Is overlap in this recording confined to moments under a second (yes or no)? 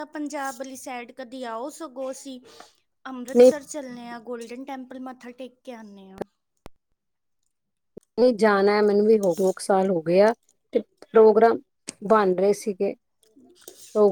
yes